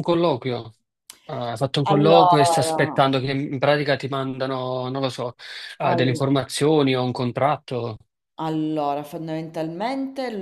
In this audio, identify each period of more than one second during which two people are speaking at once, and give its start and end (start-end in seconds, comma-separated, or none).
1.8-3.0